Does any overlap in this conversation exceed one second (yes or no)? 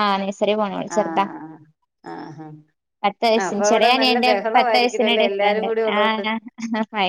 yes